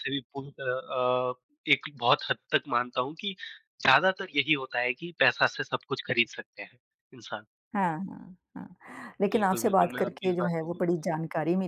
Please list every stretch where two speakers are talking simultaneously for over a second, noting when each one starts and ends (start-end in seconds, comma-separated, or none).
9.3-11.2